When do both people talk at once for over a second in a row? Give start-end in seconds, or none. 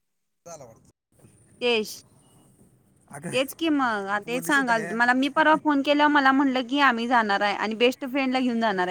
3.3-5.0